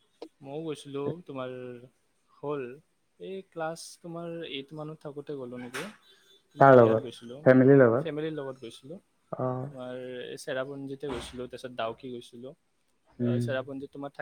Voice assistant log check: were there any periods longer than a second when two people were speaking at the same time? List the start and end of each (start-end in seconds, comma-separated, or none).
none